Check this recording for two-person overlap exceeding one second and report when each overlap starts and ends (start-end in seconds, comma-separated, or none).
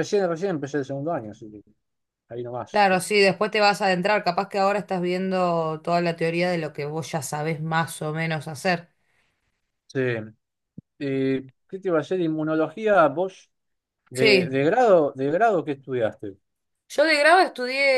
none